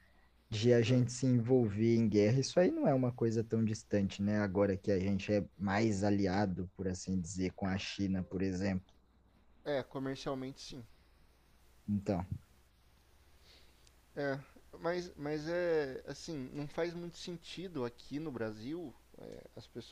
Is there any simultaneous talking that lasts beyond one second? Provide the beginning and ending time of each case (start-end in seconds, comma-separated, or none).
none